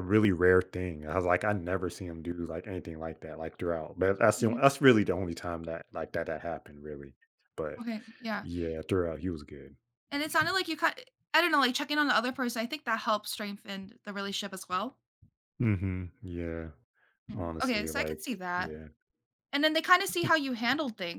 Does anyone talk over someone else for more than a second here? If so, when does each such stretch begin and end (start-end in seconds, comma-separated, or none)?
17.3-18.7